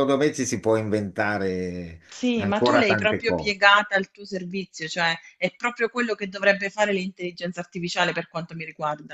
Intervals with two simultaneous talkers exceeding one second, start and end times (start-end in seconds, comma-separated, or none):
2.4-3.5